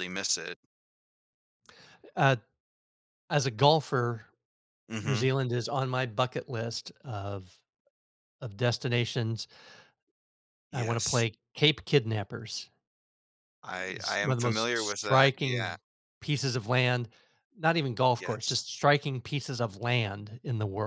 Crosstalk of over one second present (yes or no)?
yes